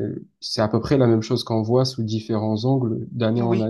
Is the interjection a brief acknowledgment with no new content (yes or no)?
yes